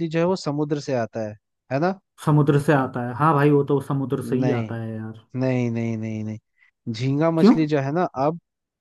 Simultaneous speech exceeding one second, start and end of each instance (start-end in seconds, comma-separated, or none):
none